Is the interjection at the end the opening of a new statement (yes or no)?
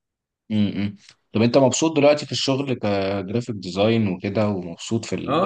yes